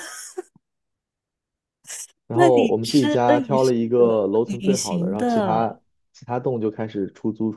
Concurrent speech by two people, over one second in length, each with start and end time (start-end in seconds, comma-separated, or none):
2.3-5.7